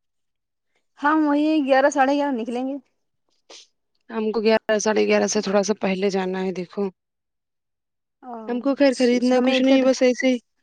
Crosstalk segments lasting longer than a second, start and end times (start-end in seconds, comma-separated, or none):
8.5-9.8